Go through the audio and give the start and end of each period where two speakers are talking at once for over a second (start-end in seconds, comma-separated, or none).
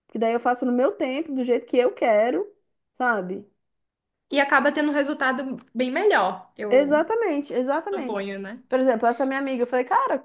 none